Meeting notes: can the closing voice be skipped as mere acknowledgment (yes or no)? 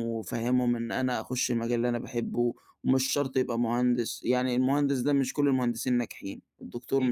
yes